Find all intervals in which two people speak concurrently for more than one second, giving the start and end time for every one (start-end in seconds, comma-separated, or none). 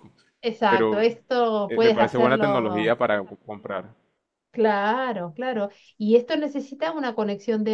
1.7-2.9